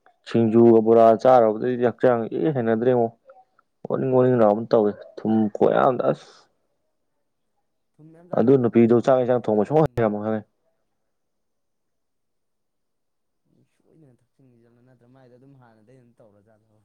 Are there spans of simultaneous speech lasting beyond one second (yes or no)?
yes